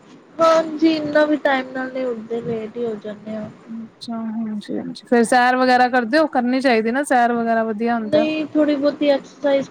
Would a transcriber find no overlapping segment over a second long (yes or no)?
yes